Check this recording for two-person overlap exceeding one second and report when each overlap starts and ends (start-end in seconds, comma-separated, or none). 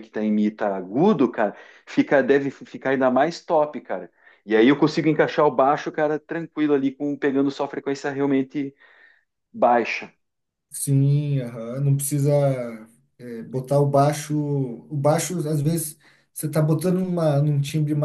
none